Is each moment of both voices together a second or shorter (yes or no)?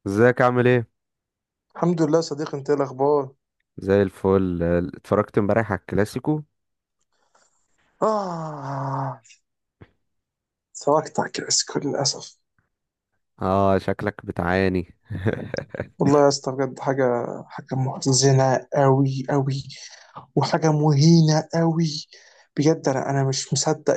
yes